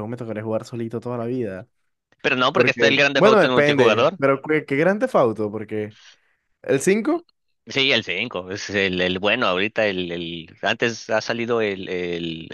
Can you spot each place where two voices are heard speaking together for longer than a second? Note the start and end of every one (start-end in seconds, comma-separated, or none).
2.5-4.2